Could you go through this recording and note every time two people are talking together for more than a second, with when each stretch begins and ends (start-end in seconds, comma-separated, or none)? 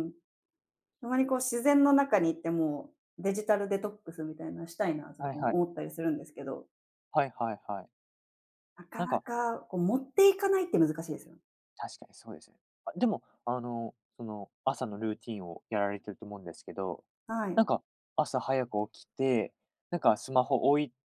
none